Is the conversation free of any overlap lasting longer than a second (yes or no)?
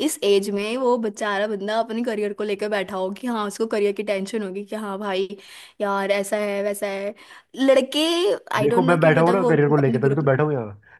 no